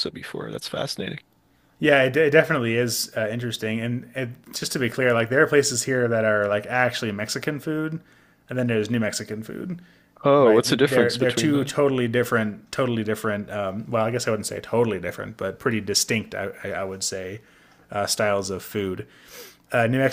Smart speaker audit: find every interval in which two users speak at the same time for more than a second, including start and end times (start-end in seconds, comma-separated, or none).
10.4-11.7